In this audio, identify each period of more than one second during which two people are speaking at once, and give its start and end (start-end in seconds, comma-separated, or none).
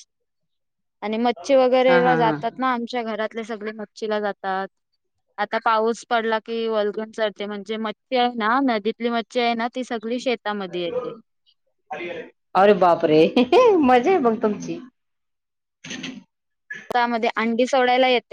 none